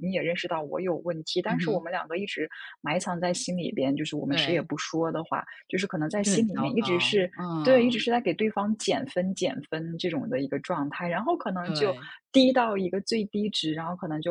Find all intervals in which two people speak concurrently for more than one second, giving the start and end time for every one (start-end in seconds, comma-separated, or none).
6.1-8.0